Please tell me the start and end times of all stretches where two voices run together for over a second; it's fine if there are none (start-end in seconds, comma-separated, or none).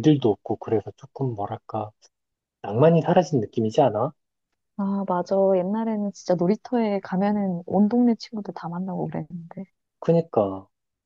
none